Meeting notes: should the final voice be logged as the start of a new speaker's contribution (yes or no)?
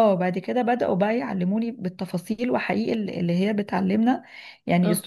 no